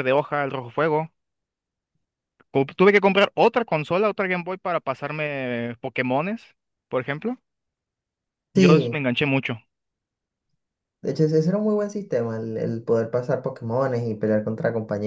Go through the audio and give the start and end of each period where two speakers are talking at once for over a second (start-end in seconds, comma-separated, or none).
none